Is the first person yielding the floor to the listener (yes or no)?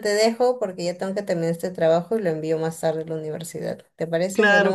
yes